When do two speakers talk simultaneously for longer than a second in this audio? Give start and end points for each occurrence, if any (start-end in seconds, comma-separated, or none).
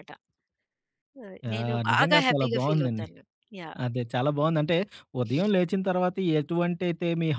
1.5-3.1